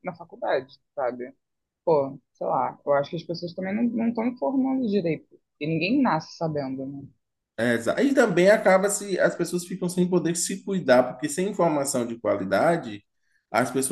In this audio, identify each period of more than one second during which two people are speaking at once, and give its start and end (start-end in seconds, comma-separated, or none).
none